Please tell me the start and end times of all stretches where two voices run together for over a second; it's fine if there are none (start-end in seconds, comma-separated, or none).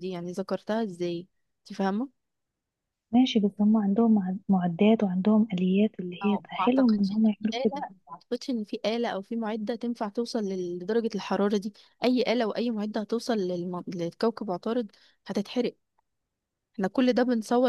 6.2-7.8